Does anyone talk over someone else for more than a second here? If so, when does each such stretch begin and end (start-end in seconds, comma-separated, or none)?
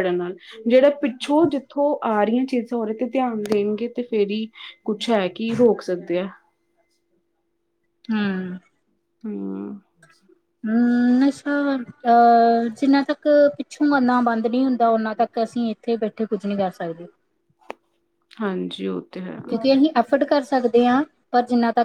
none